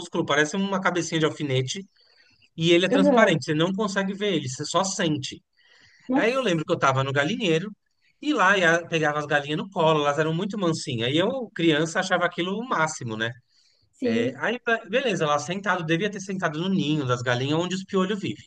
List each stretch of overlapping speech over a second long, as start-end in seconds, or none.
none